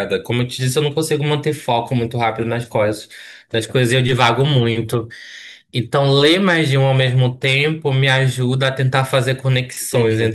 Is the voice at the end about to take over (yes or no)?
no